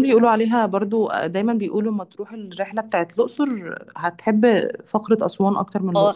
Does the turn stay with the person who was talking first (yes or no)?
no